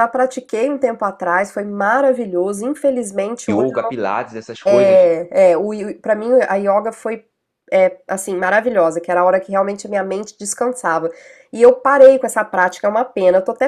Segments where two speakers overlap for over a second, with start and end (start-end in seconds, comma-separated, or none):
none